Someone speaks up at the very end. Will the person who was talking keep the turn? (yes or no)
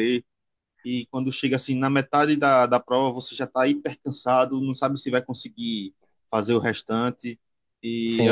no